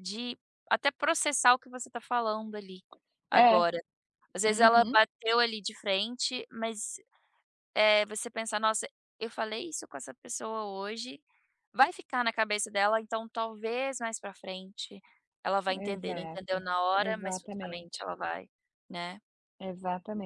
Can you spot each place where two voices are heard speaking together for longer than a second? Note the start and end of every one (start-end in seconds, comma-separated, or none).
15.8-18.1